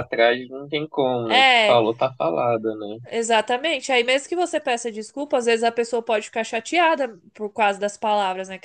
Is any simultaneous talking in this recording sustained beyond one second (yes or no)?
no